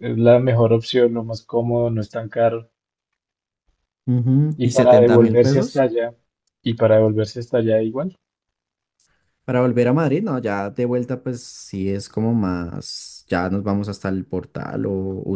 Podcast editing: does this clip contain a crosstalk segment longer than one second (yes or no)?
yes